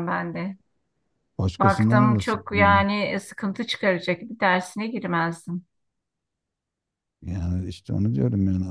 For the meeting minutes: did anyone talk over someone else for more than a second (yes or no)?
yes